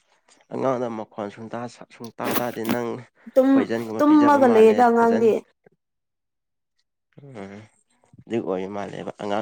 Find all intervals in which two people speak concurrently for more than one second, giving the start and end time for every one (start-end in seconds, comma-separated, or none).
4.0-5.3